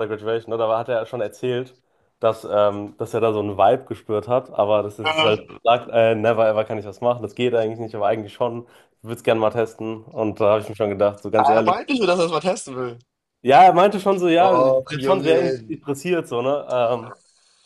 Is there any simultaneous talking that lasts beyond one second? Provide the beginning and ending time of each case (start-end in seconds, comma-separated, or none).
14.3-15.6